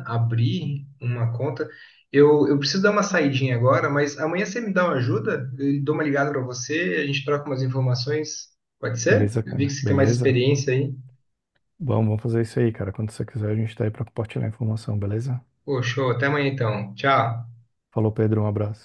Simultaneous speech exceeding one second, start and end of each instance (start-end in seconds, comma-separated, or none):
9.1-10.4